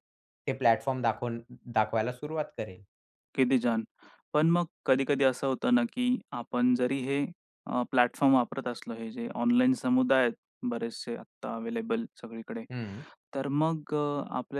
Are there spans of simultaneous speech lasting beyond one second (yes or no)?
no